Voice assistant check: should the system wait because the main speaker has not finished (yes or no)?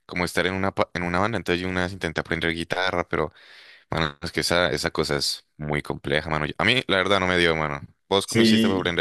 no